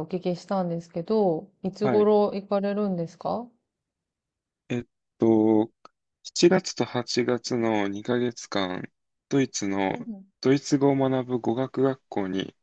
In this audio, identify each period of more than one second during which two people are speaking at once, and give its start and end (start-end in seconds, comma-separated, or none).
none